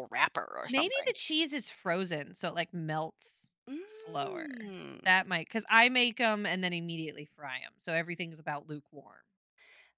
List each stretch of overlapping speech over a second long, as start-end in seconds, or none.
3.7-5.1